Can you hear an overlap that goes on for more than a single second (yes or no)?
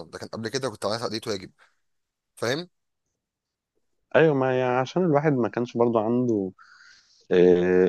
no